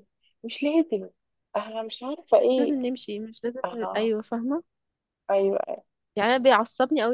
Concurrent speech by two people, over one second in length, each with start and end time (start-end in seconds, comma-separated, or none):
none